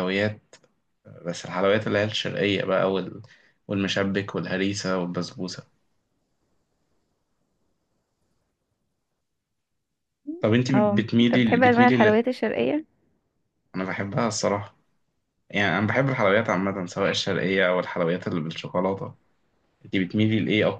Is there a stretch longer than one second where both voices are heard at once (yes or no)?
yes